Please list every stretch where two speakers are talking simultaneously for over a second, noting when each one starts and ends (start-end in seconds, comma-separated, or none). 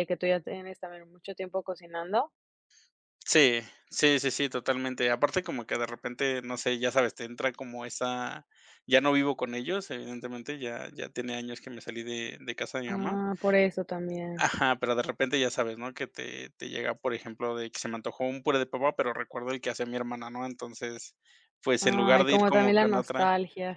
21.8-23.3